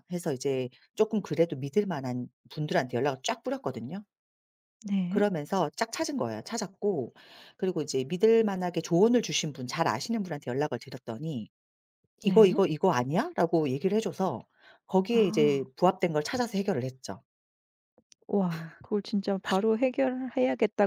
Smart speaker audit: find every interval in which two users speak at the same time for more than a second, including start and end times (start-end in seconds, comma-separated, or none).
none